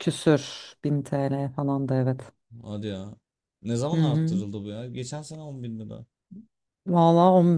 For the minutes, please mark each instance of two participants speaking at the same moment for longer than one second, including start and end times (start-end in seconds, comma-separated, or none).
none